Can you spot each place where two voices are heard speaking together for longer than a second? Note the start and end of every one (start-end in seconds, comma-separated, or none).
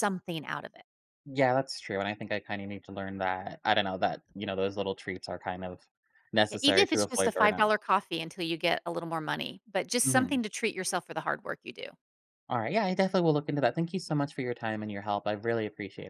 6.5-7.7